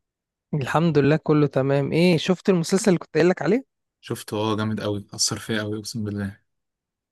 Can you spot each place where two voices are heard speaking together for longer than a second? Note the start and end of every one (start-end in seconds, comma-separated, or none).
none